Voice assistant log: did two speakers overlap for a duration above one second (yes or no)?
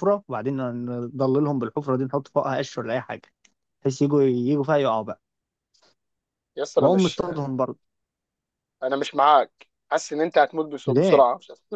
no